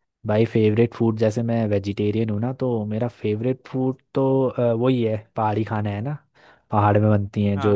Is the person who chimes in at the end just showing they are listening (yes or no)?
yes